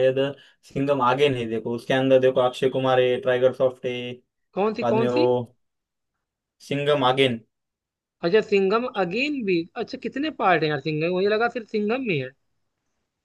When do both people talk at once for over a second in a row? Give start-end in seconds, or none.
none